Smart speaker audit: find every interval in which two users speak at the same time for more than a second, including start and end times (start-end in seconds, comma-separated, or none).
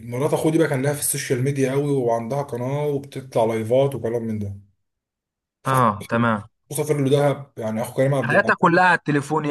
none